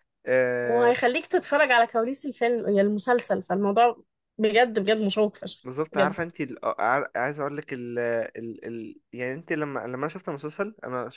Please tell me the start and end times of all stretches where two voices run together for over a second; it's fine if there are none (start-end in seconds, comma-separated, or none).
none